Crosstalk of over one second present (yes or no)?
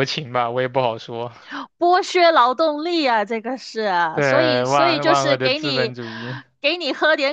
yes